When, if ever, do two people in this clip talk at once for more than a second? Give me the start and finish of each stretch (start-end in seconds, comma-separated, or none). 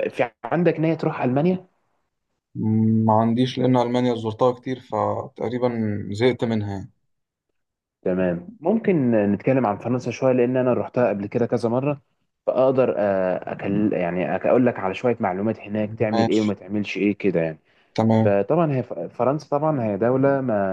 none